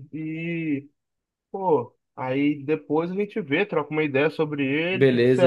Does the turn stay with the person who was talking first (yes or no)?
no